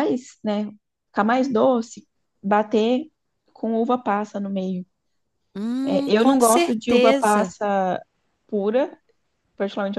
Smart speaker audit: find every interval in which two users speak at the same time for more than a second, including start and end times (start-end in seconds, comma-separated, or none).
5.8-7.5